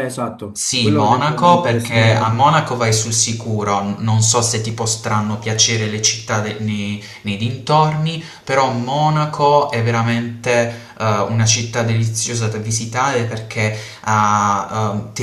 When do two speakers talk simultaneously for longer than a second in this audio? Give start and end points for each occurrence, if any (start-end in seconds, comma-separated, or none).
0.6-2.4